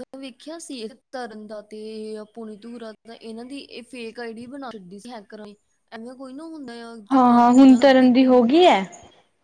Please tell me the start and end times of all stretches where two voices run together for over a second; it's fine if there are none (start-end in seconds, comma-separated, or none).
7.1-8.5